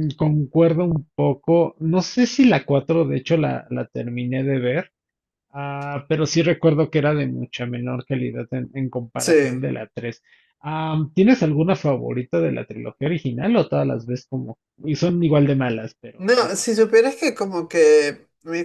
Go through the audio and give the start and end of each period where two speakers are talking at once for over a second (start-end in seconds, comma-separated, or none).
none